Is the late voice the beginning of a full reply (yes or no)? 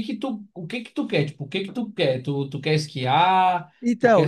yes